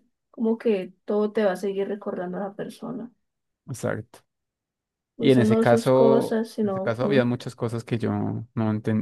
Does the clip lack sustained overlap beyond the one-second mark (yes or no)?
no